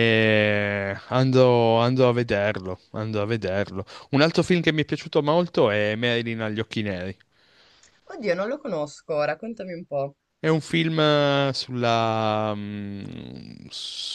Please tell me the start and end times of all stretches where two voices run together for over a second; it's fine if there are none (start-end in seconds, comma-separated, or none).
none